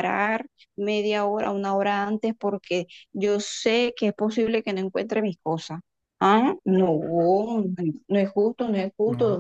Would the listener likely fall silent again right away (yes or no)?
yes